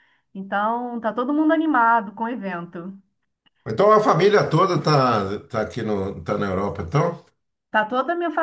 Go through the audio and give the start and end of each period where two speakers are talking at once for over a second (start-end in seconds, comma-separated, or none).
none